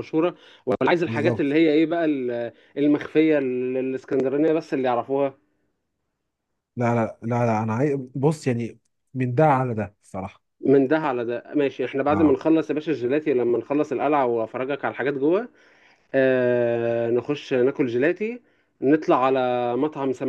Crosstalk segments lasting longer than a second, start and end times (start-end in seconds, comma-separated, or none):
none